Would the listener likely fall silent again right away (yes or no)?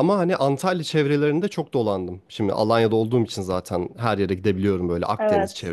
yes